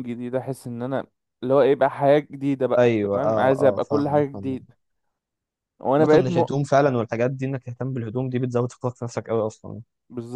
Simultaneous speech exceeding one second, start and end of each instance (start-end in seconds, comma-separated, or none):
2.8-4.7